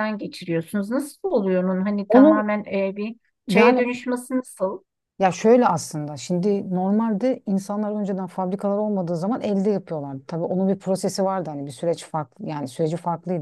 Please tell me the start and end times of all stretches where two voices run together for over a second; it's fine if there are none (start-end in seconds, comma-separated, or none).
none